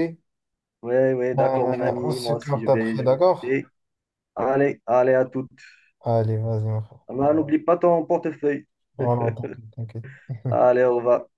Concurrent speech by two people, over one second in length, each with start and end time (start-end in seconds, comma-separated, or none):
1.4-3.2